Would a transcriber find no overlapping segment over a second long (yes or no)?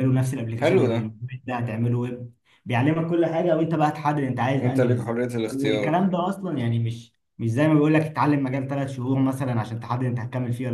no